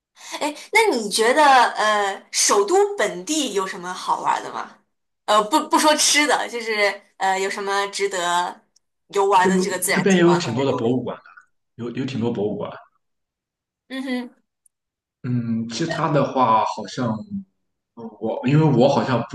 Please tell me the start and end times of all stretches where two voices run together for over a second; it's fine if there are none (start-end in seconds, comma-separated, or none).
9.4-11.2